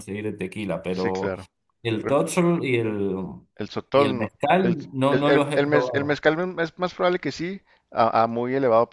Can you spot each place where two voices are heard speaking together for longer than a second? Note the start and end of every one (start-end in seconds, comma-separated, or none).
3.9-6.2